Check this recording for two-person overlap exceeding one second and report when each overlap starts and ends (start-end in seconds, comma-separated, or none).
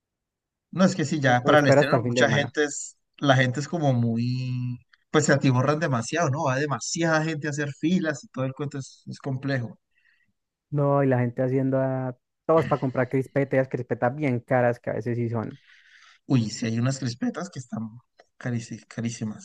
1.2-2.5